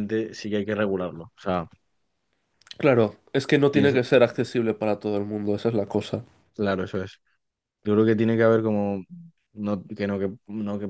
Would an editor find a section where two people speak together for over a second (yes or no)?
no